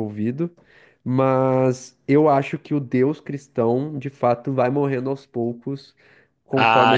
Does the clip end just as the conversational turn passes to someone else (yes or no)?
yes